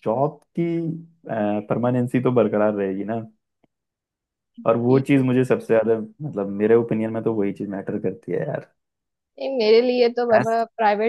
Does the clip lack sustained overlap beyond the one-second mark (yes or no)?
yes